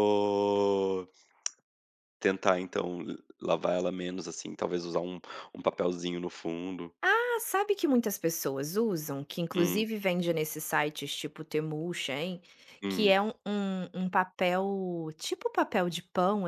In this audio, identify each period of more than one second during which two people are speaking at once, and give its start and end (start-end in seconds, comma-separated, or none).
none